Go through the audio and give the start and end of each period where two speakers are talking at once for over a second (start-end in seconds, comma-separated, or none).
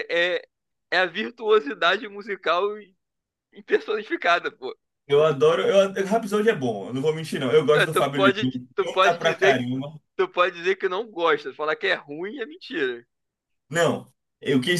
7.8-9.6